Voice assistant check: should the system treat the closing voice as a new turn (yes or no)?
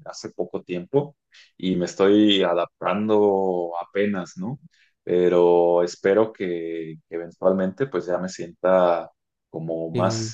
no